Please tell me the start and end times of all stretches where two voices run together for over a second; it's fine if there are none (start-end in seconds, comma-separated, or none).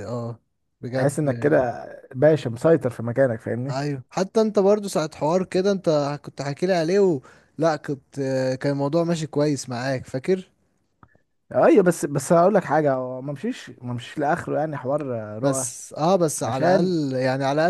none